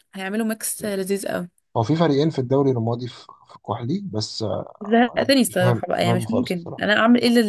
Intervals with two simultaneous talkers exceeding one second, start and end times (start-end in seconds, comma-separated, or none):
5.1-6.8